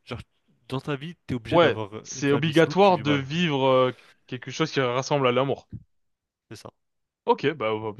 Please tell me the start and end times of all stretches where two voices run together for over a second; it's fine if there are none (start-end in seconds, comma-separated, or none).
1.5-3.3